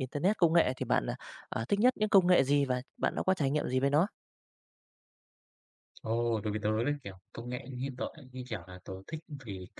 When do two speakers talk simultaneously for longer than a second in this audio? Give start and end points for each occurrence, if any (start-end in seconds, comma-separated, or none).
none